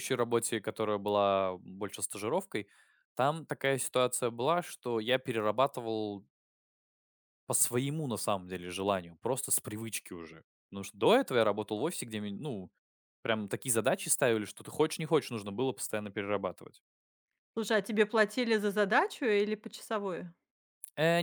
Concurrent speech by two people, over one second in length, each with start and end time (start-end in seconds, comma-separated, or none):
none